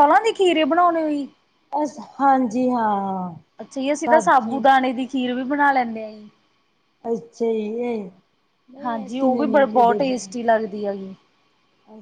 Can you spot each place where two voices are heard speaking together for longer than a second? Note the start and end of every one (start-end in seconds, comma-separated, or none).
8.8-10.3